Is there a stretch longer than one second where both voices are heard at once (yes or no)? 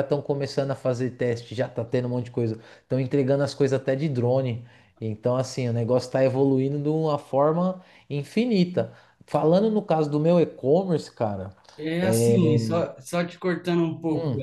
no